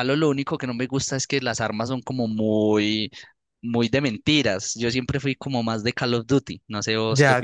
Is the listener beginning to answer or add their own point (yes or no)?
yes